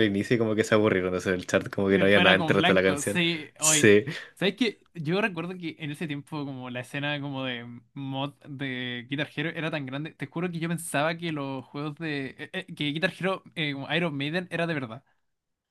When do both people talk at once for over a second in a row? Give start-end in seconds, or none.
1.9-3.9